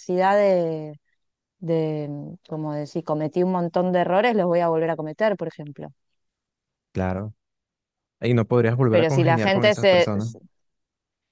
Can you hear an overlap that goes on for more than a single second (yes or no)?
yes